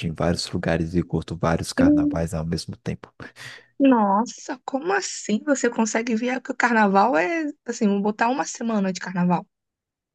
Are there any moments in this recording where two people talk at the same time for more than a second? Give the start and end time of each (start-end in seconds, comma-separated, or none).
none